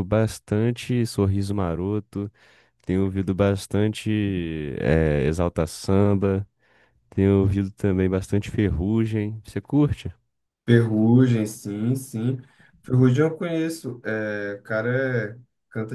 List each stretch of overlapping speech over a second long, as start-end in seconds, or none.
none